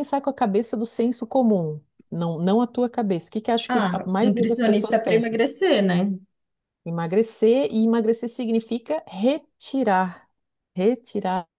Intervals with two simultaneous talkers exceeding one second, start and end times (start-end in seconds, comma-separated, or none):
3.7-5.4